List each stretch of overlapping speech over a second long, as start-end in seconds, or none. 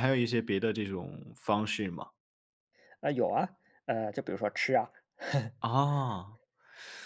none